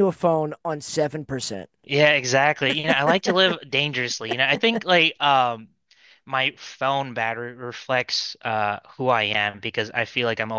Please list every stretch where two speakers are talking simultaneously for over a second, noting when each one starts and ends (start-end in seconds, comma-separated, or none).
none